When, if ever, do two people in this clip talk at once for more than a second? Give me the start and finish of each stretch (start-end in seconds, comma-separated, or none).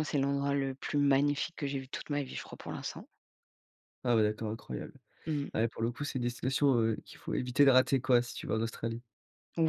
none